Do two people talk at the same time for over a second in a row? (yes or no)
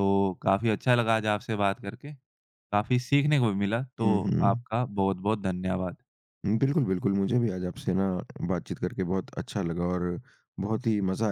no